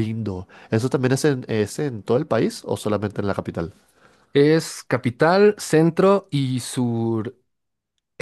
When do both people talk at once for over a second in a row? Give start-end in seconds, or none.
none